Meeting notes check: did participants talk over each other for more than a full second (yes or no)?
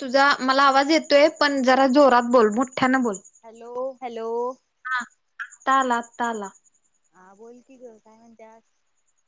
no